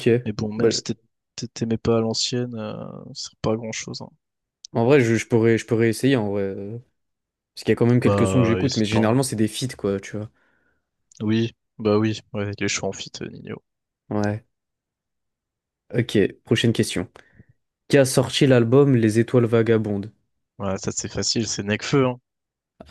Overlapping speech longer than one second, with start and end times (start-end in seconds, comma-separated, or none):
8.0-9.2